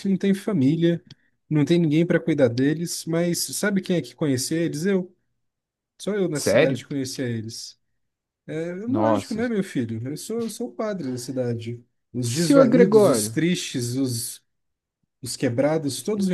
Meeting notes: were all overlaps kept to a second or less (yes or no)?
no